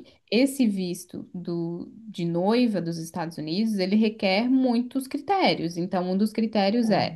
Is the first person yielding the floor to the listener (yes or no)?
no